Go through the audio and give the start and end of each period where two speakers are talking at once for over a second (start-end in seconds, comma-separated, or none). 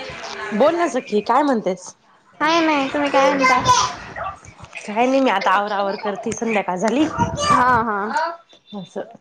none